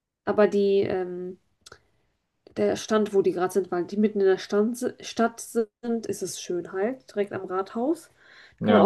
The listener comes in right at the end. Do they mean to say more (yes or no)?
yes